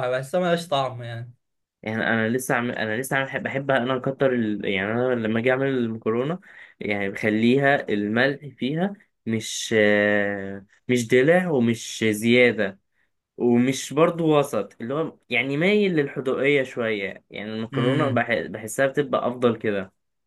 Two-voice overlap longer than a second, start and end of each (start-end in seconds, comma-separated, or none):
none